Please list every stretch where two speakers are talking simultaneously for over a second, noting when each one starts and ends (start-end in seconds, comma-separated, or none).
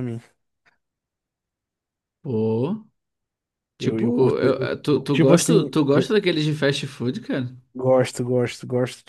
3.8-6.2